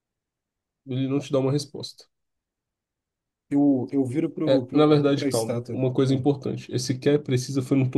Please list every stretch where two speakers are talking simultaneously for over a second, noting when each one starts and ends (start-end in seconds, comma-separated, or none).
4.4-6.3